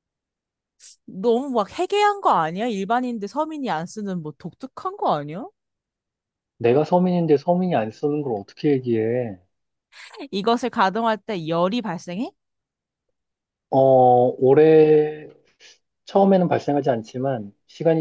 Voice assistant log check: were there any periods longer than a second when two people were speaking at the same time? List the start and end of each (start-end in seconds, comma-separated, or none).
none